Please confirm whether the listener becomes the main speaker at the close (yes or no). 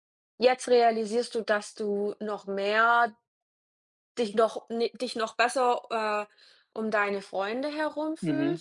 yes